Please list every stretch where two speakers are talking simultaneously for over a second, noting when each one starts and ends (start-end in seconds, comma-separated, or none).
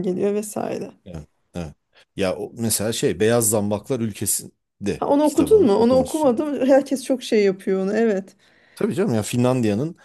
5.0-6.5